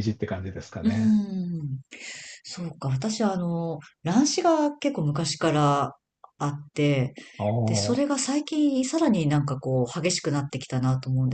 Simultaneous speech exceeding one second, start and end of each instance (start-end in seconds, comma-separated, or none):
none